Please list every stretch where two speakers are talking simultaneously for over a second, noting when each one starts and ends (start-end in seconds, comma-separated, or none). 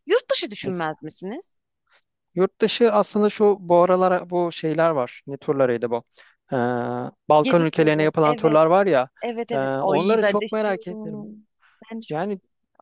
7.4-8.6, 9.5-11.3